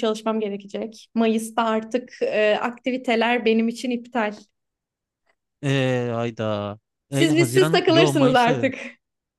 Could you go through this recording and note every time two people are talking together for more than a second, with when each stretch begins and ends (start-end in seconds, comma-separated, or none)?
7.1-8.7